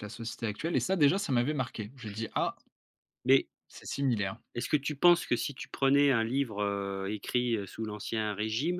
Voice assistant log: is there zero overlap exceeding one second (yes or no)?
yes